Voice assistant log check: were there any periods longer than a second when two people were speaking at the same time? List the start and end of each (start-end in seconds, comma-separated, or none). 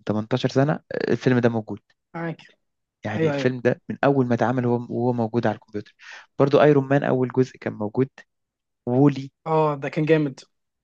none